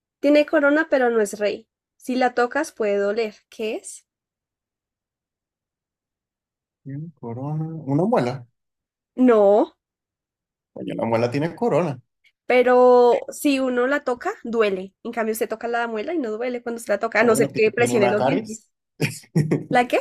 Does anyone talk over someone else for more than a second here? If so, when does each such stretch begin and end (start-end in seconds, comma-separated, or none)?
17.2-18.6